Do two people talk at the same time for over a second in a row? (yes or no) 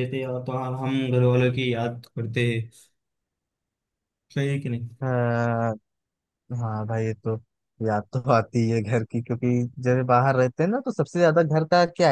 no